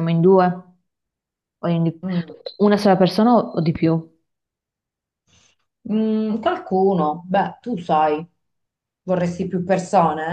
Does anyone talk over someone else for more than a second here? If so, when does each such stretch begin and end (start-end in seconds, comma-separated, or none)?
none